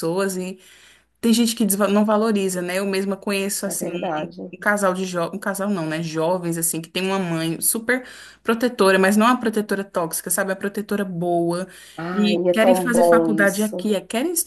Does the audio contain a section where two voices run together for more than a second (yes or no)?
yes